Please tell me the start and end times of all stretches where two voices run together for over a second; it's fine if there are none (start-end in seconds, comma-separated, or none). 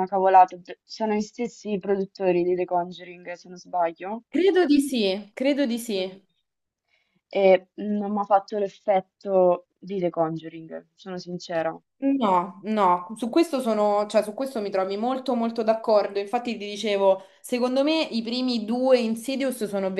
none